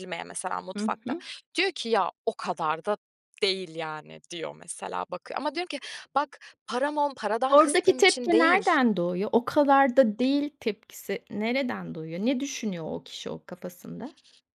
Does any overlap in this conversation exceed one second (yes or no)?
yes